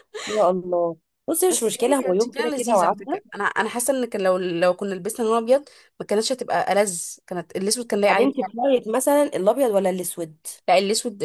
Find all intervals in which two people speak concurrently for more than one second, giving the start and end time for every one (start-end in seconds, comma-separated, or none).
1.5-3.1